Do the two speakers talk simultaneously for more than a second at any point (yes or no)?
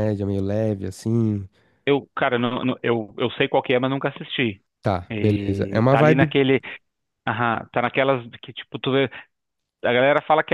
yes